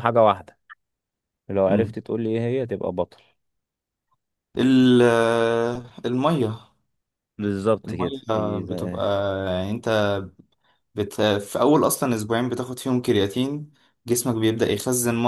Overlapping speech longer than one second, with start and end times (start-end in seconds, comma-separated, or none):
none